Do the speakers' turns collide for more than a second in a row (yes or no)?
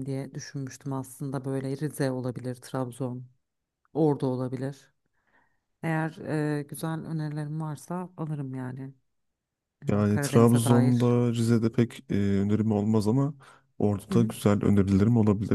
yes